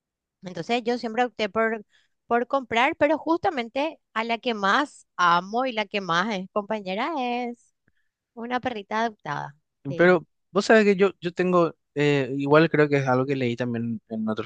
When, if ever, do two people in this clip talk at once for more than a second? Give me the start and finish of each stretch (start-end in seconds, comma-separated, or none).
none